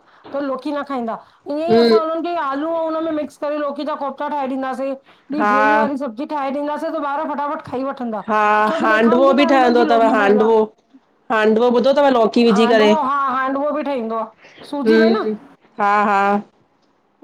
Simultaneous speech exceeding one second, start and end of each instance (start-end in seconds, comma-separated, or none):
8.7-10.5